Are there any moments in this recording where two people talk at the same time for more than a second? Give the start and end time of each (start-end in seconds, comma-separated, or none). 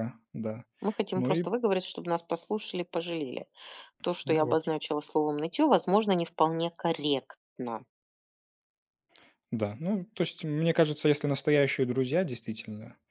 none